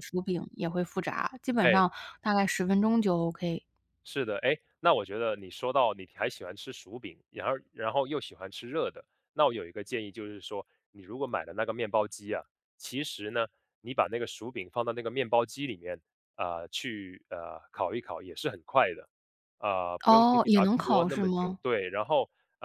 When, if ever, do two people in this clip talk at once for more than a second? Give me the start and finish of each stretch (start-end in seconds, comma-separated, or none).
20.1-21.6